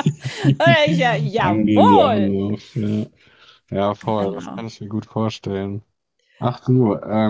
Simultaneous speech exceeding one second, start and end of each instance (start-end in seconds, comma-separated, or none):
0.6-2.3